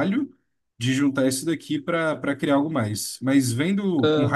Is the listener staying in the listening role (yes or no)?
yes